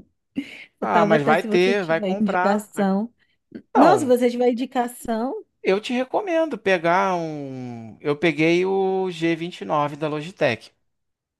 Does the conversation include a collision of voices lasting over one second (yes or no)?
yes